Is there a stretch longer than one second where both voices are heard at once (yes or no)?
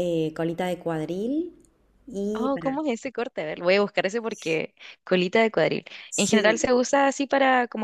no